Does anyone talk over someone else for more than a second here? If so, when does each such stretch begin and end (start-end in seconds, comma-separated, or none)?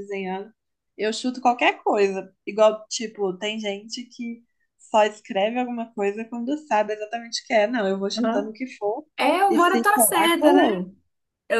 9.5-10.8